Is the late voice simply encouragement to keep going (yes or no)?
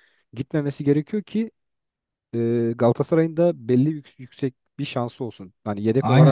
no